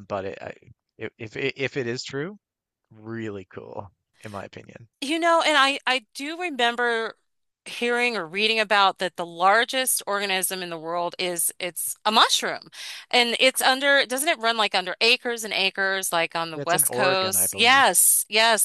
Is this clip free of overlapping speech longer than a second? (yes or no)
no